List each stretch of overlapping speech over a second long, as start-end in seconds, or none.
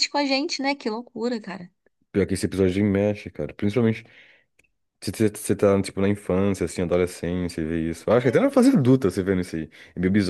none